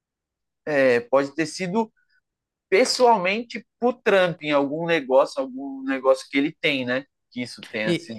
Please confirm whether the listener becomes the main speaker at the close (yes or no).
no